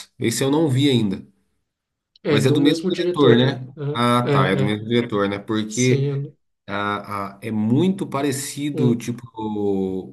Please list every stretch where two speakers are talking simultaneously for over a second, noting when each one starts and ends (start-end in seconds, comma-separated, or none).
2.3-4.8